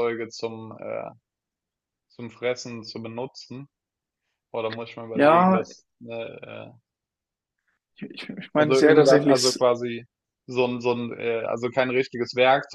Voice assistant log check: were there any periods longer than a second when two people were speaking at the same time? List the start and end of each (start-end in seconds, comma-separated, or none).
8.2-9.7